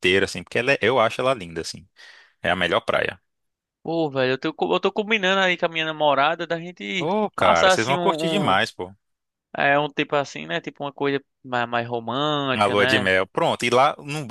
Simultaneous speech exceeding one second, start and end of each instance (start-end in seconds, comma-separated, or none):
7.0-8.6